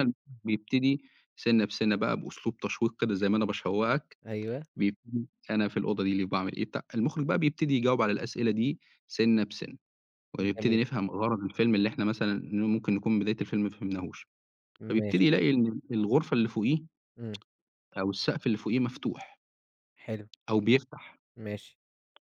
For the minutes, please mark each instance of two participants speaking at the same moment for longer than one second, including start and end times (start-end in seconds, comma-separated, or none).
none